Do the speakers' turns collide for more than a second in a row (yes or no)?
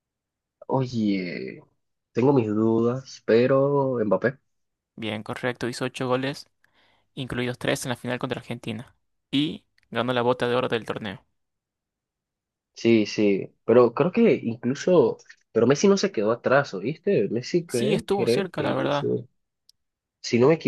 yes